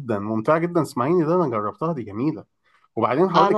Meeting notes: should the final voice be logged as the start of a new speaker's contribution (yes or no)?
no